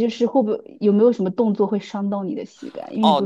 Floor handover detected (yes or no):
yes